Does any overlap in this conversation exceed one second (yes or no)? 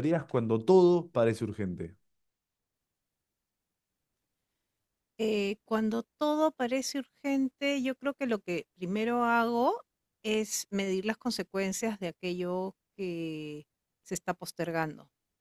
no